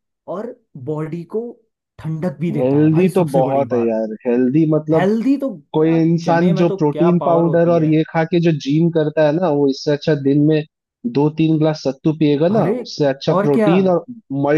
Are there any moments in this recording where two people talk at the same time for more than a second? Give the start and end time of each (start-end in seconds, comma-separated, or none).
2.5-4.0, 5.7-8.0